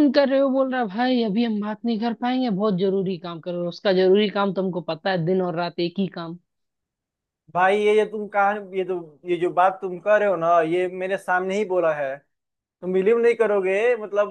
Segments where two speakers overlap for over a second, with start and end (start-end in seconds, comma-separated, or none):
none